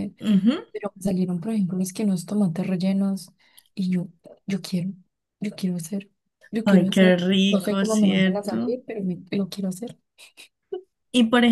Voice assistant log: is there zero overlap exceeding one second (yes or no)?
no